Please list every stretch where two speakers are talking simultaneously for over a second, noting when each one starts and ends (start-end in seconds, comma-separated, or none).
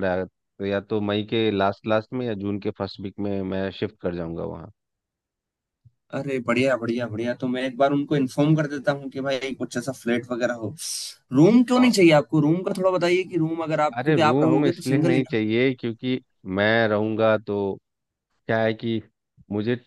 14.0-15.4